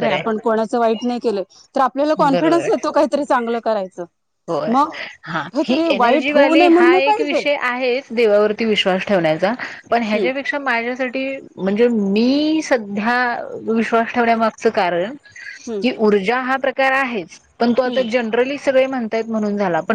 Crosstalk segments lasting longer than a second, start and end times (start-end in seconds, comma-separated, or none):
5.5-7.4